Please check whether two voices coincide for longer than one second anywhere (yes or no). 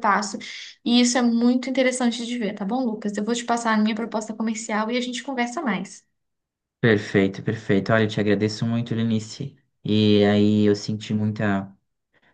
no